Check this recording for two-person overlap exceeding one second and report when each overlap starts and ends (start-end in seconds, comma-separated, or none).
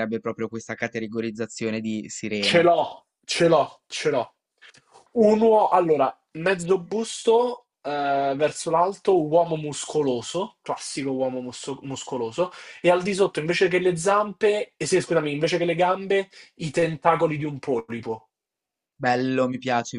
none